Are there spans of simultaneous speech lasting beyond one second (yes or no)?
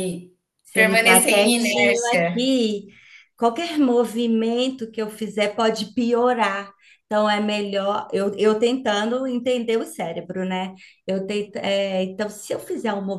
yes